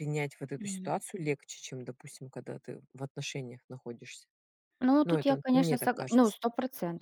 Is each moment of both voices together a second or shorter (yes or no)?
no